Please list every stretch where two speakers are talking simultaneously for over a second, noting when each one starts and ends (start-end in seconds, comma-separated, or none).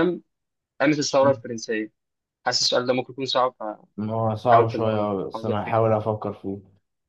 4.1-5.9